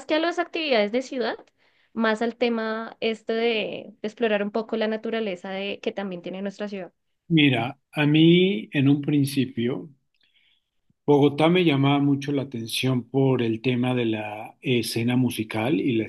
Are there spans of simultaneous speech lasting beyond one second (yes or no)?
no